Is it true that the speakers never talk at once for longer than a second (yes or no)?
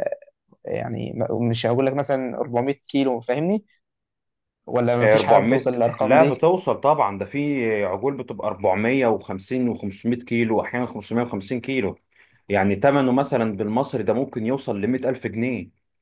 no